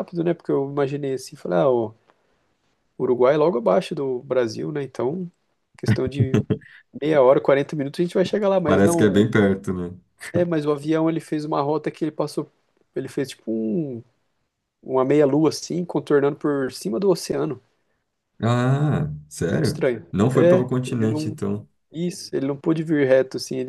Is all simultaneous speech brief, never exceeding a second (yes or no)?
no